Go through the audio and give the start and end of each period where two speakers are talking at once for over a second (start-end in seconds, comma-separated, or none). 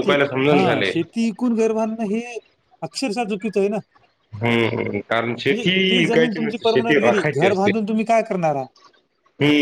5.5-7.7